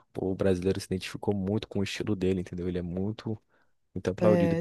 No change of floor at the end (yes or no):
no